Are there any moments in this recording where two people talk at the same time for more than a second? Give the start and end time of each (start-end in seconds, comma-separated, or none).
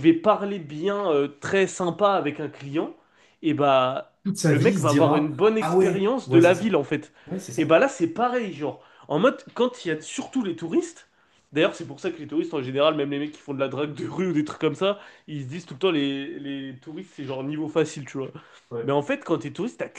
4.2-6.8